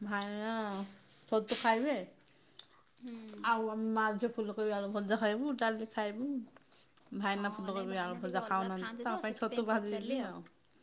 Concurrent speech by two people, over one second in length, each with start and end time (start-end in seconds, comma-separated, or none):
7.3-10.2